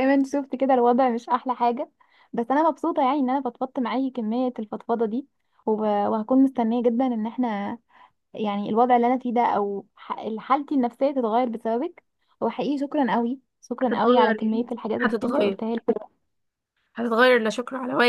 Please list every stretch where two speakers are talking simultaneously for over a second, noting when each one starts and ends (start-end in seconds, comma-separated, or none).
13.8-15.6